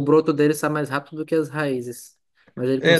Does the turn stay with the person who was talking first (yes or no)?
no